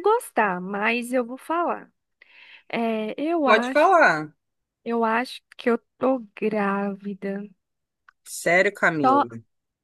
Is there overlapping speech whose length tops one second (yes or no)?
no